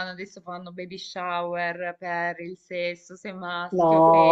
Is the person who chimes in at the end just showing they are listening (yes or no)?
no